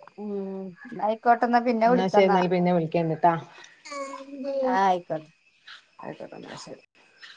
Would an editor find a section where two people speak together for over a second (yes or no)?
no